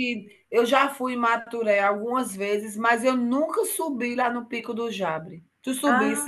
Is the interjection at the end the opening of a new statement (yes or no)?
yes